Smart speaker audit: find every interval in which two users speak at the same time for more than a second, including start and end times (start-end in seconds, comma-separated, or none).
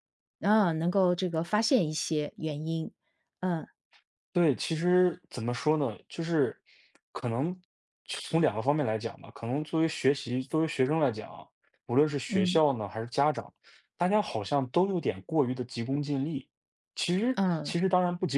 none